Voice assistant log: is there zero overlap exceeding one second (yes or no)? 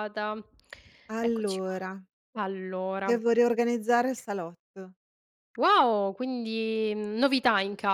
yes